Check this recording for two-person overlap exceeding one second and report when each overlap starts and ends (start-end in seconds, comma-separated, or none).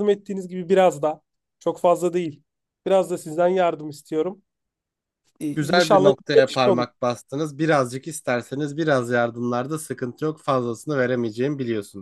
5.5-6.8